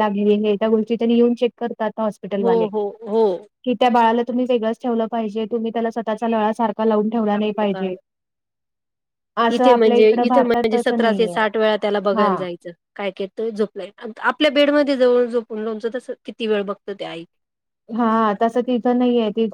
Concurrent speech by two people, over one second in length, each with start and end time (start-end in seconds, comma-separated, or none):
9.6-11.3